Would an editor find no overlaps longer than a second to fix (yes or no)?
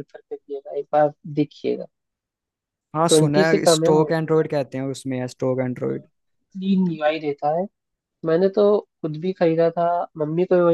no